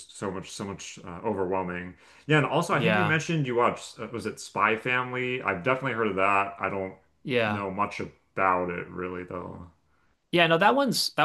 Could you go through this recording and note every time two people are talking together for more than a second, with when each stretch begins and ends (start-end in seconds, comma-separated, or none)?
none